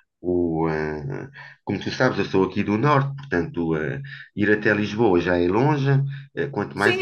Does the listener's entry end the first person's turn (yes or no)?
yes